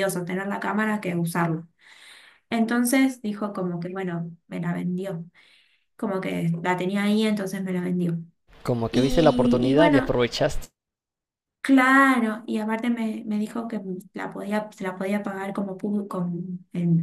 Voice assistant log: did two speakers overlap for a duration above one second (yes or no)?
yes